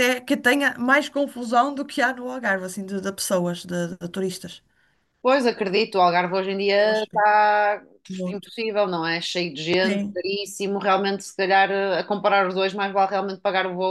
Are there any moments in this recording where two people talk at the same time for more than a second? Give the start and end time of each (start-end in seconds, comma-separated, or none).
none